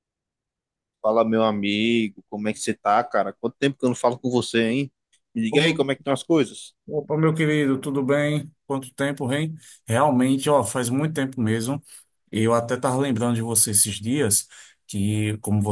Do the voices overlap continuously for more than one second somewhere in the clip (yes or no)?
no